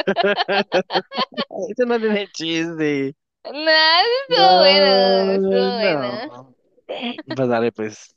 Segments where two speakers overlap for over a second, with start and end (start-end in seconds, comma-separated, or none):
4.3-6.3